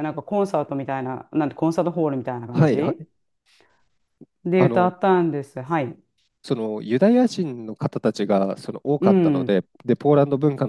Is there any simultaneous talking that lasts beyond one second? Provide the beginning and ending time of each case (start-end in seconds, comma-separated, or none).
none